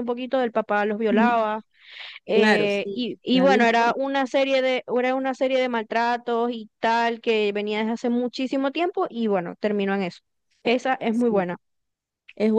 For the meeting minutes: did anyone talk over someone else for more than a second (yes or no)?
yes